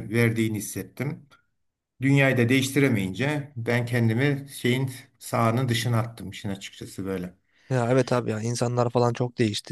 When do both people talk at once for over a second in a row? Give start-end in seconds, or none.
none